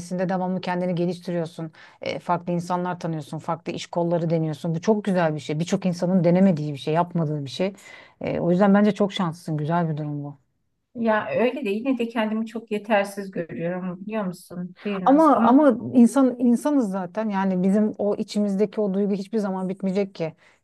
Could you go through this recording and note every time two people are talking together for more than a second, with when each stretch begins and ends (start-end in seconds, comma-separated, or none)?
none